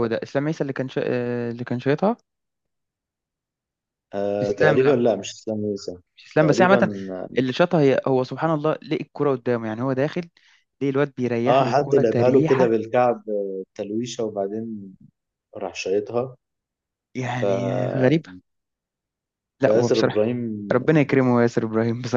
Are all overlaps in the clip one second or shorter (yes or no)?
no